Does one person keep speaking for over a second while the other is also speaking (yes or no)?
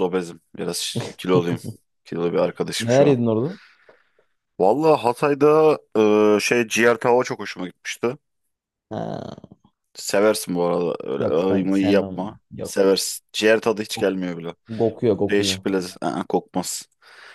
yes